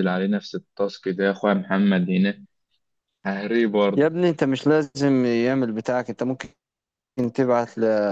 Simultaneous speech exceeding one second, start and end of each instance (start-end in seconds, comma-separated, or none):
none